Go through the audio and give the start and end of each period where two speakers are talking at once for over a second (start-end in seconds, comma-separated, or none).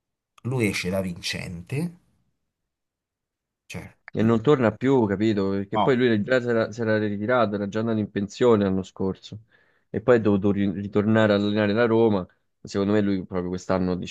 none